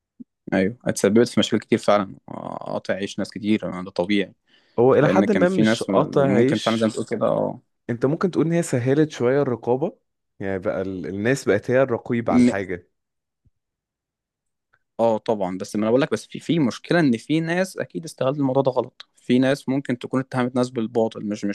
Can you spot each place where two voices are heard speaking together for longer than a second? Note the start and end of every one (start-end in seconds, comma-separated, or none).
5.0-6.9